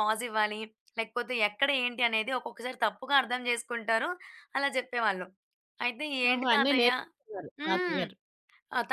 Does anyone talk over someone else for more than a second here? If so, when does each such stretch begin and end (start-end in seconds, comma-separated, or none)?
none